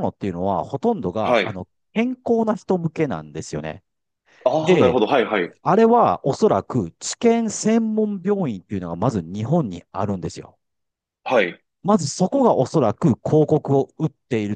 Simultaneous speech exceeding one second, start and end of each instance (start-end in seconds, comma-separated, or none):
none